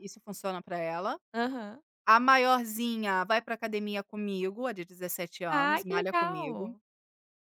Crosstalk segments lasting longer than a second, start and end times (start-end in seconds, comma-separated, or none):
5.5-6.7